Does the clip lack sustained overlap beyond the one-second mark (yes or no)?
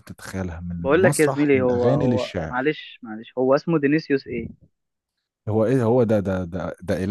no